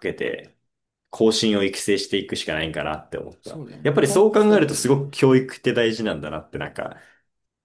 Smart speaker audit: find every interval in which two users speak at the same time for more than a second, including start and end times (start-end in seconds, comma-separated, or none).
3.4-5.0